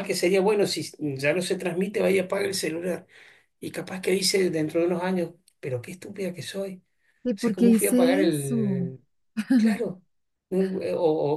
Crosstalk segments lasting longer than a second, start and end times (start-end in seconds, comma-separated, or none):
7.3-8.8